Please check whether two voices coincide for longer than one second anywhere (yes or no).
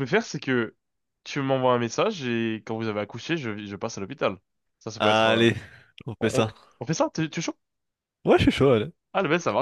no